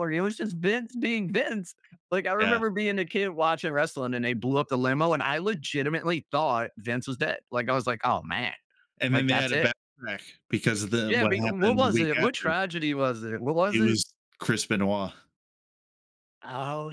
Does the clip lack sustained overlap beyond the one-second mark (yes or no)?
no